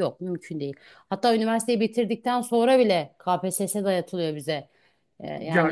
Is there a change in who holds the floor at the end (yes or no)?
yes